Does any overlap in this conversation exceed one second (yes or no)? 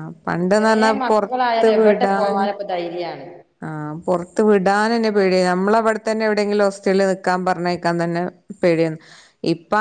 yes